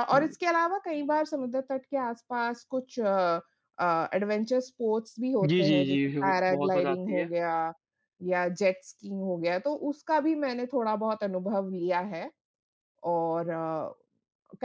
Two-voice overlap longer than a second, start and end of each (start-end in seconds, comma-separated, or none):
5.5-7.3